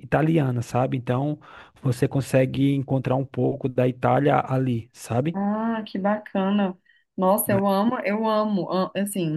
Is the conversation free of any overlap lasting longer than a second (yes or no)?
yes